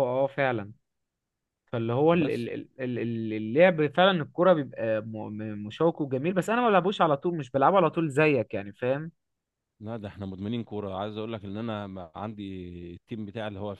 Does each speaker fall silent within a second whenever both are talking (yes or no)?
yes